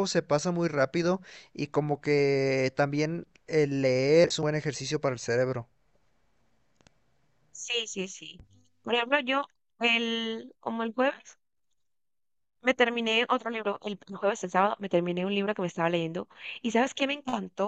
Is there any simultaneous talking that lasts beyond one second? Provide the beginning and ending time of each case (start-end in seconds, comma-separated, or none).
none